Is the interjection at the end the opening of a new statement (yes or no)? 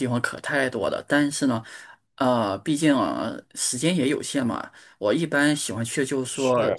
no